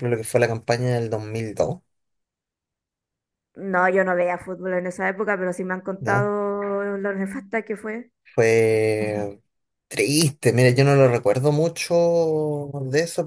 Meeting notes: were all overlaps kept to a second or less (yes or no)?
yes